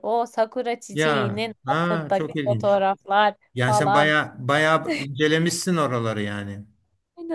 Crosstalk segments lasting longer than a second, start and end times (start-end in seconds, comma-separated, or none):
0.9-2.8